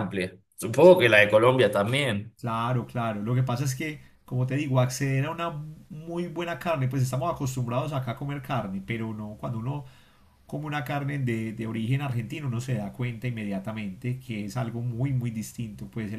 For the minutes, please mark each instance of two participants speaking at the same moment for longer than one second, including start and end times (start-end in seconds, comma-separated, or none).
none